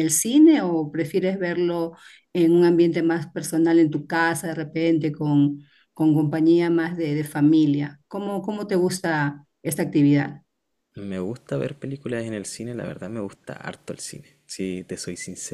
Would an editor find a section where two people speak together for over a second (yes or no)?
no